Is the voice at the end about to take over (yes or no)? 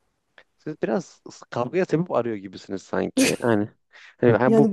yes